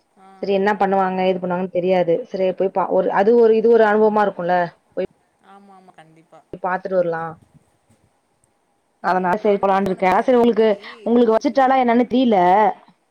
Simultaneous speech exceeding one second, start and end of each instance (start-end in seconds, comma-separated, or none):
9.1-10.7